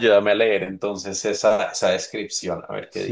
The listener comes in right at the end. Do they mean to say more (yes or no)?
yes